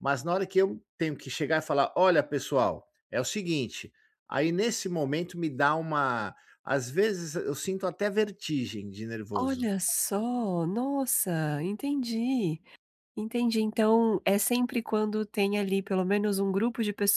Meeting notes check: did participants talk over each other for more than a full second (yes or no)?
no